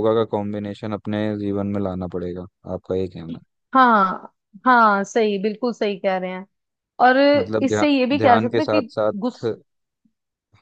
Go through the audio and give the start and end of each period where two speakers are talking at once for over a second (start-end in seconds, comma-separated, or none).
7.6-9.4